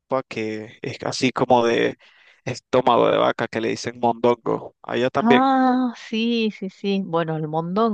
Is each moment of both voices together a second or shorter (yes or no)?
yes